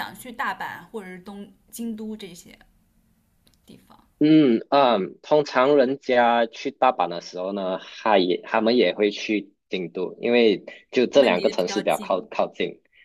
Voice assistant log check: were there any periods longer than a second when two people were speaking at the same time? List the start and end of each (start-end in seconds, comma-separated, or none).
11.1-12.3